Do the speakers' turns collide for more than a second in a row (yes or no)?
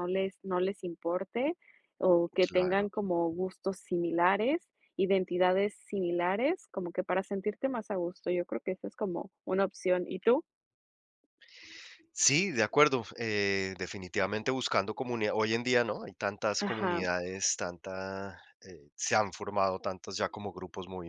no